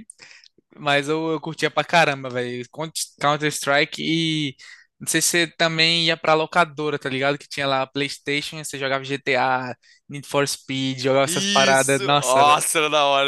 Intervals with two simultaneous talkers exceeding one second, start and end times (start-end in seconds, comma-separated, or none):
11.2-12.6